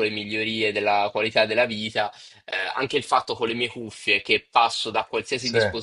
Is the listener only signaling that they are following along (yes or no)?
yes